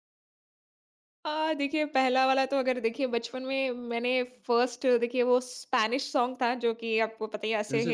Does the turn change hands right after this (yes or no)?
no